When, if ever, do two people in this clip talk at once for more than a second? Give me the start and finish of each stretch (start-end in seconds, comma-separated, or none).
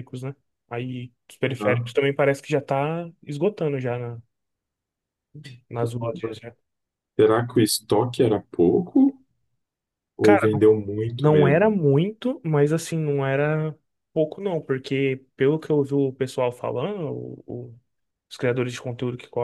none